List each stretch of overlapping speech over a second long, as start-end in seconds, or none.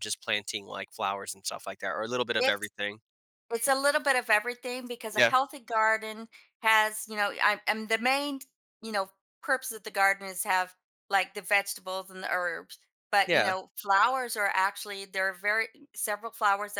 none